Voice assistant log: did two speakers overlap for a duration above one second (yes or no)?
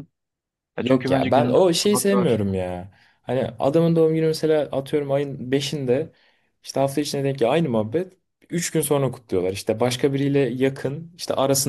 yes